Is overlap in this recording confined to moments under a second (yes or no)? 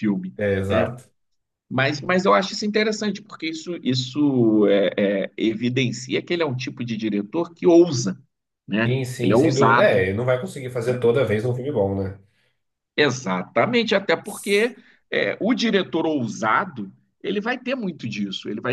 no